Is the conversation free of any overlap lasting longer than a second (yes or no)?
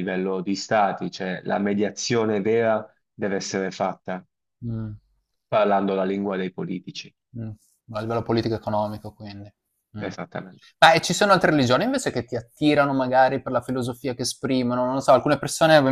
yes